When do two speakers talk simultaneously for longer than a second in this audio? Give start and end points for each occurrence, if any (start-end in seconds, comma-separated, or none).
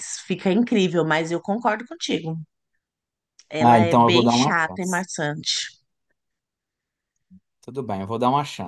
3.6-5.0